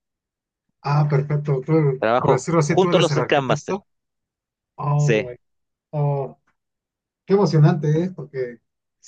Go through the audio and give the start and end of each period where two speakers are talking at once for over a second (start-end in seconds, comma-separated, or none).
2.0-3.8